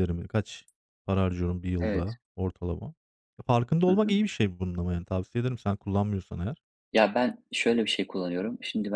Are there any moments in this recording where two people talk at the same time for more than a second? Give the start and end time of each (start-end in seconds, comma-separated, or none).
none